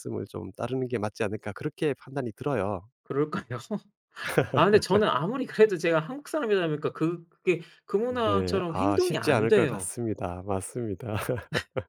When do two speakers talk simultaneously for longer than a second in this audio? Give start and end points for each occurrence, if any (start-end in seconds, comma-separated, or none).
8.1-9.9